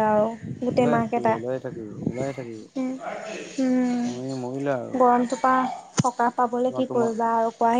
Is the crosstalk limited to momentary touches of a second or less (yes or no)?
yes